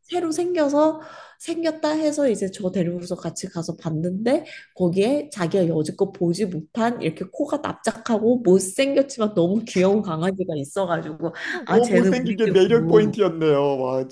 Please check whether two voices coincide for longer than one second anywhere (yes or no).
yes